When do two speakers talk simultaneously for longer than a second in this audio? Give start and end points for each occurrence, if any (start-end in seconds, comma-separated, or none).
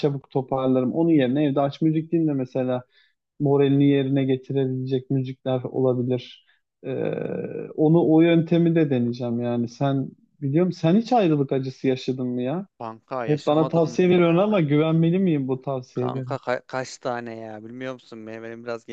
13.2-14.5